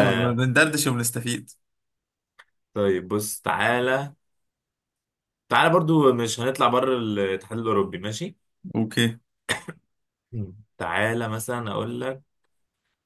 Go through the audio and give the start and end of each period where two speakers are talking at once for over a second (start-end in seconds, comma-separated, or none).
none